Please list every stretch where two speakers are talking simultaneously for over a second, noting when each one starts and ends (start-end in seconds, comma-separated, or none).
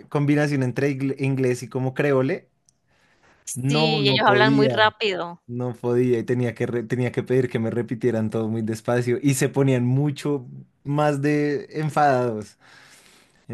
3.5-4.9